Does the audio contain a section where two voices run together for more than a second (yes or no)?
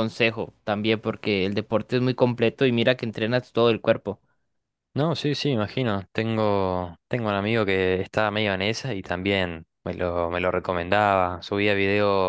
no